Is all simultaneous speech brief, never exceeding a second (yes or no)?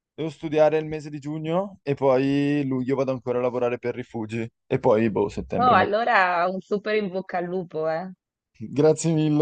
yes